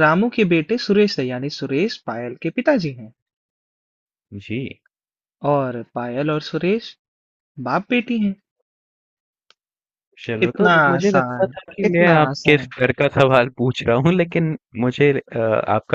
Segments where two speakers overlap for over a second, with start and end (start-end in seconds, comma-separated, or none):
10.5-12.7